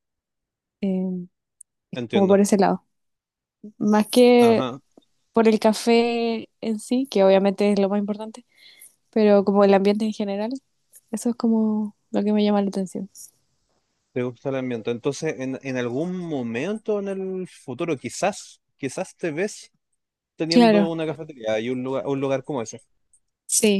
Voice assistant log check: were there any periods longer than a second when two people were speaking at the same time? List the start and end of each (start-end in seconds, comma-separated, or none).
none